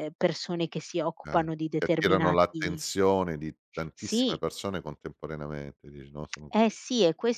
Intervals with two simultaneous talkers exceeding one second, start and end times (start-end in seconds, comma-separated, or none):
1.2-2.8